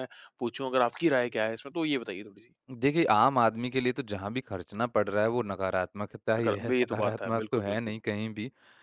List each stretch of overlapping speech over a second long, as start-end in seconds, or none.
6.4-8.0